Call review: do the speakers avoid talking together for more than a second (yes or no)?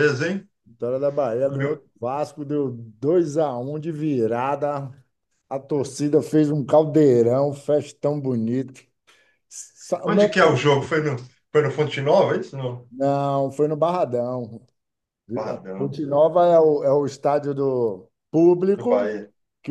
yes